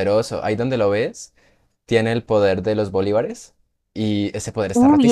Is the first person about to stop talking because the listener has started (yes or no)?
yes